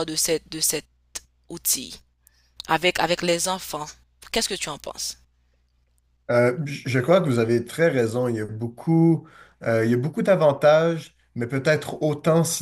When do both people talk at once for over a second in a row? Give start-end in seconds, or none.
none